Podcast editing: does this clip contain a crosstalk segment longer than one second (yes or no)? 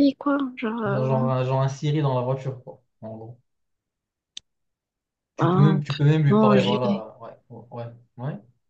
yes